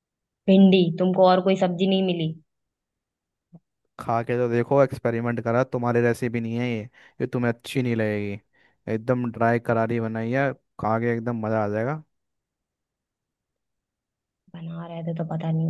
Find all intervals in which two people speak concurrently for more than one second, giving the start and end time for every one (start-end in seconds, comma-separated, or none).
none